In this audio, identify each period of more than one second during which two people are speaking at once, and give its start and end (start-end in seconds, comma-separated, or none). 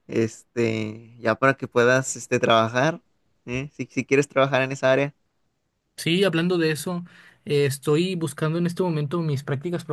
none